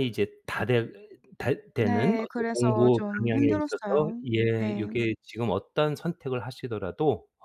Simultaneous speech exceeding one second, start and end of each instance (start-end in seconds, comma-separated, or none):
1.8-4.9